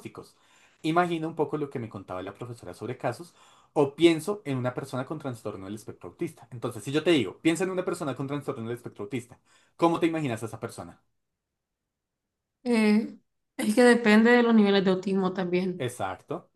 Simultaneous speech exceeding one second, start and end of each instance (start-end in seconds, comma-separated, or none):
none